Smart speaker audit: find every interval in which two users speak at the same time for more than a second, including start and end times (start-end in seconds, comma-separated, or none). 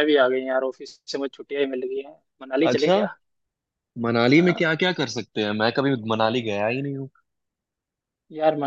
none